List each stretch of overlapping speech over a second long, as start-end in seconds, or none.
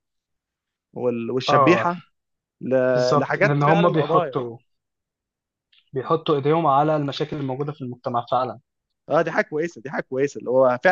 3.2-4.4